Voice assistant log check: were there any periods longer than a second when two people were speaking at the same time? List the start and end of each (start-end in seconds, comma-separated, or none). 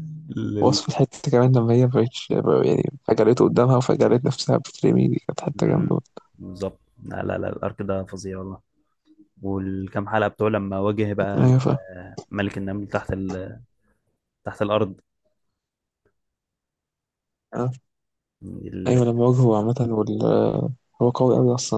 none